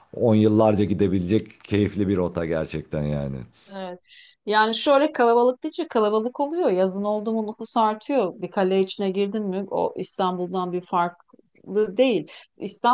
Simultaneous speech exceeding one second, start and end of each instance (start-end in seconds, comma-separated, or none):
none